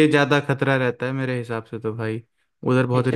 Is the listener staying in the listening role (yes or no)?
no